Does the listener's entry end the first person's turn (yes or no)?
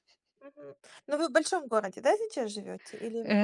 yes